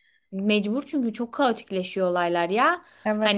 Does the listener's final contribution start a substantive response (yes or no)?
no